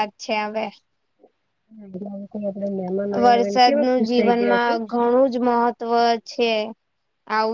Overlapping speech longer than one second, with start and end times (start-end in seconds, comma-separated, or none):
3.2-4.7